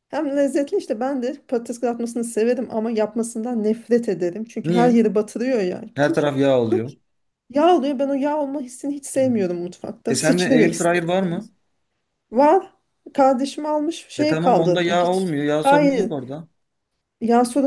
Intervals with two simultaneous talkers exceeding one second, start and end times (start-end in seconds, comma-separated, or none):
10.1-11.5, 14.2-16.1